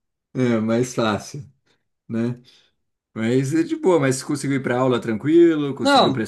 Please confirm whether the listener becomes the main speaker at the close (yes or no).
yes